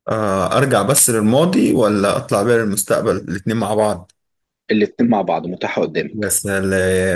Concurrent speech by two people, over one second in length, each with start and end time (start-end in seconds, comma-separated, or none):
none